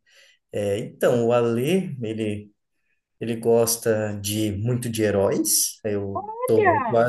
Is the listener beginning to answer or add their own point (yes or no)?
no